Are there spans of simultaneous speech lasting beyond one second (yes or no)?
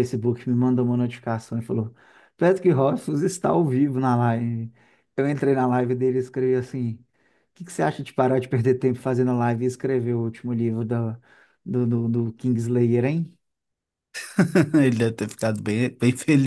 no